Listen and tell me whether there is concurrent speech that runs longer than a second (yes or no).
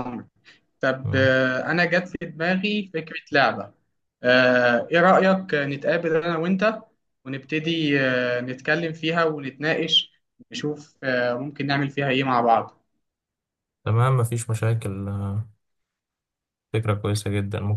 no